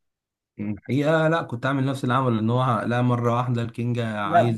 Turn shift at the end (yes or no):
yes